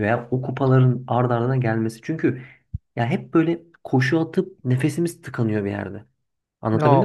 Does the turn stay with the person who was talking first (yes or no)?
no